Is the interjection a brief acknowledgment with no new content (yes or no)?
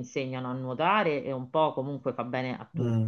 no